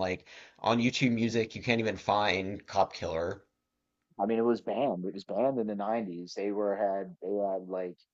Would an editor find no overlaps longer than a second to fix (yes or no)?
yes